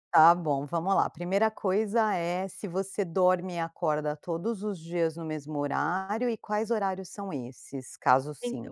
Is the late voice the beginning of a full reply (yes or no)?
yes